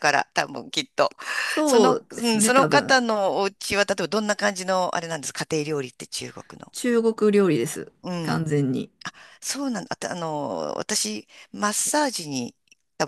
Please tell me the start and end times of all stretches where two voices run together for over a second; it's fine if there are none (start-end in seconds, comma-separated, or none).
1.6-3.0